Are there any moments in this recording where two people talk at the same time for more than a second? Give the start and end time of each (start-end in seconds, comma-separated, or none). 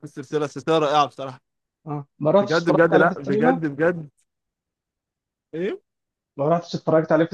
2.4-3.6